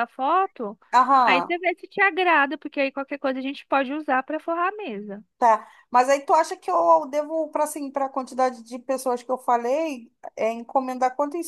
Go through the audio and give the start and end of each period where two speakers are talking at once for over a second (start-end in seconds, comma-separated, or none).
none